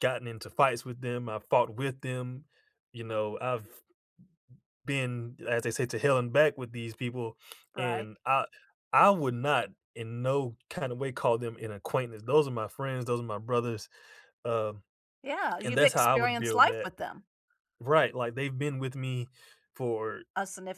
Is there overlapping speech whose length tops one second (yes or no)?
yes